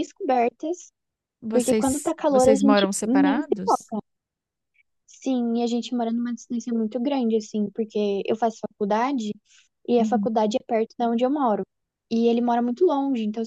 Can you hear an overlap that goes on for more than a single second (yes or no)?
yes